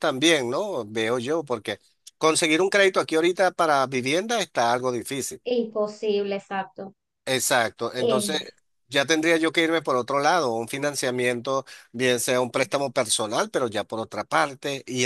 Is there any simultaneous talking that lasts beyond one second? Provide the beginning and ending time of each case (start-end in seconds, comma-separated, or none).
none